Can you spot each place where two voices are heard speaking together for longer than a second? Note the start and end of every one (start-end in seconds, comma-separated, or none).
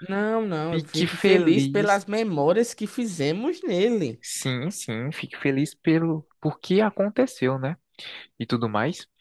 0.7-2.0